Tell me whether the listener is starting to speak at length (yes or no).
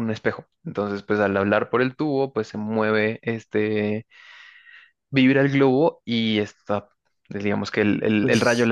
no